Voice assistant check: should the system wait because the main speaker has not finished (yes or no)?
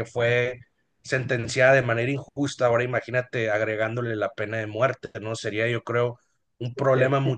yes